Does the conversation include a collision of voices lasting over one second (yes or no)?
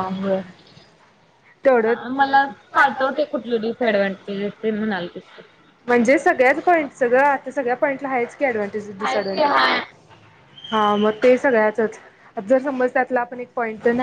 no